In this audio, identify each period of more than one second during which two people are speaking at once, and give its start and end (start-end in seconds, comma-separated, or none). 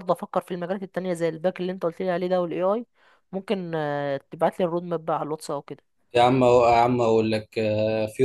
none